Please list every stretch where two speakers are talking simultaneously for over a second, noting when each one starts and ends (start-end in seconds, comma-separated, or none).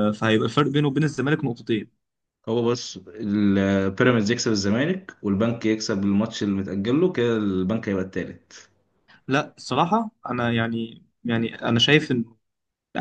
none